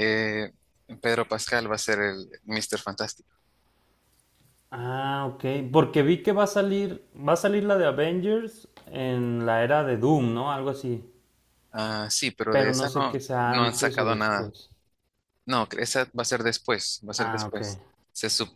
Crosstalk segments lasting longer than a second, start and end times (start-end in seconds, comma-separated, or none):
12.5-14.5